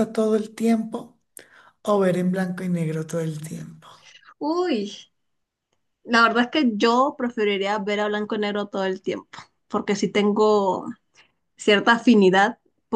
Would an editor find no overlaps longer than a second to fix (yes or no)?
yes